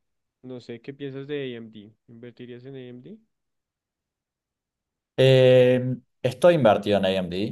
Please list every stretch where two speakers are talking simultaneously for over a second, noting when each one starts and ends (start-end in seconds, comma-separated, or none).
none